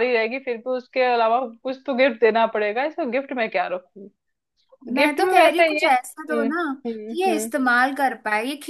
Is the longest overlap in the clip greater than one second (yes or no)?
yes